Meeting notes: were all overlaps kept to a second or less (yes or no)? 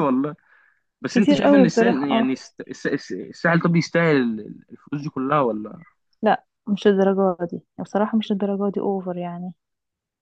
no